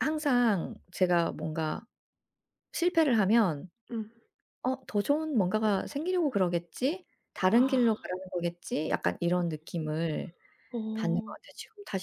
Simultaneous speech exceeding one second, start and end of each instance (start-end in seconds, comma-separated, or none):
none